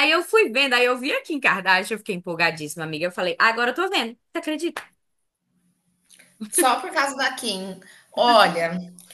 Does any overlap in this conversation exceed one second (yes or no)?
no